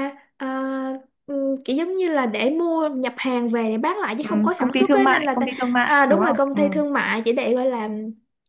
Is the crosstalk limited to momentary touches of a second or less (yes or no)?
no